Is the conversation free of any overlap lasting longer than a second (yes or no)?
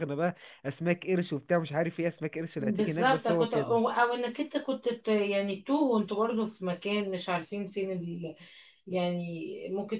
no